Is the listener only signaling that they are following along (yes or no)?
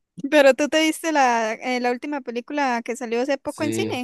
no